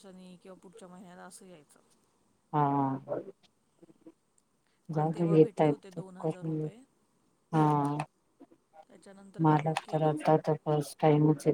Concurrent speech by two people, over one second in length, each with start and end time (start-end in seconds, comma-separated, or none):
4.9-6.7